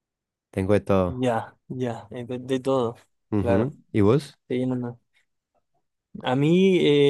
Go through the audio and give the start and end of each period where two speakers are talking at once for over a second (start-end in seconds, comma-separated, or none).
none